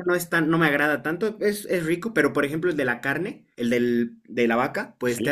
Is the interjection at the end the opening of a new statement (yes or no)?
no